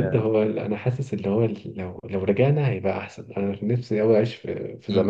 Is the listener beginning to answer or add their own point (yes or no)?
yes